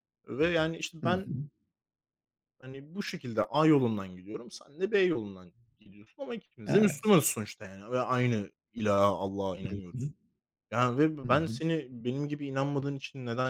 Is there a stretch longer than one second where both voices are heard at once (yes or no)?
no